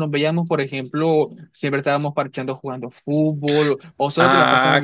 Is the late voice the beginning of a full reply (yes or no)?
yes